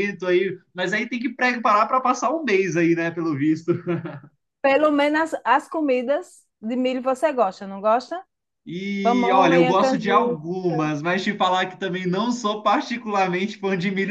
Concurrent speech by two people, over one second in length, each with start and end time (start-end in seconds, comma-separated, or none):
9.0-10.4